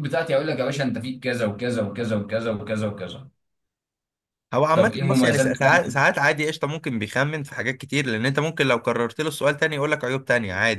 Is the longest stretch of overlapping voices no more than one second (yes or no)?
no